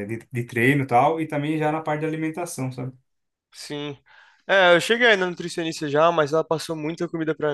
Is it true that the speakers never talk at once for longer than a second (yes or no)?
yes